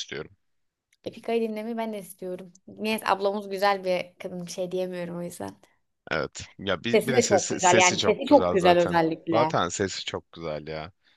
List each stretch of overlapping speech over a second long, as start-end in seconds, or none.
6.9-9.6